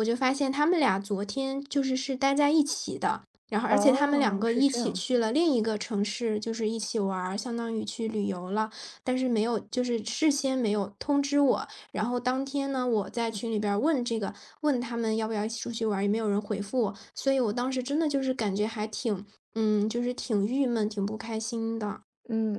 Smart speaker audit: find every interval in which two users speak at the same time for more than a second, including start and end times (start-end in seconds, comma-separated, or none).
3.7-5.0